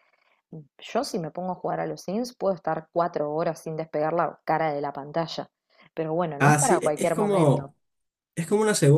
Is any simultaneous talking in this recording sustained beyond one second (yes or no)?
yes